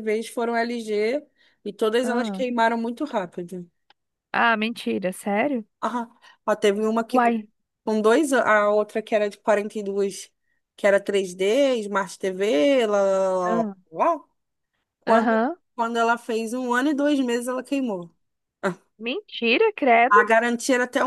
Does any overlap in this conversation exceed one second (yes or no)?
no